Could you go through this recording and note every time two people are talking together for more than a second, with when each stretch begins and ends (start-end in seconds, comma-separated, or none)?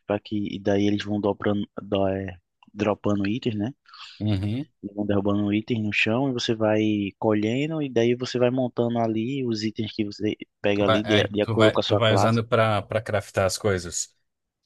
10.7-12.4